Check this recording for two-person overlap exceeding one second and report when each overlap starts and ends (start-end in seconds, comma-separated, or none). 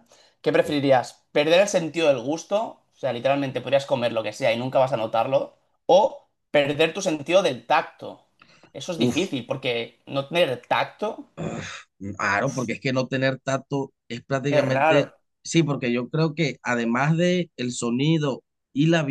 none